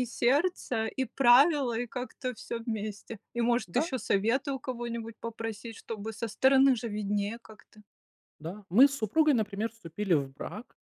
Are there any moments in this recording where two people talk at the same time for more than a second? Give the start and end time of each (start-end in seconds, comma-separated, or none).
none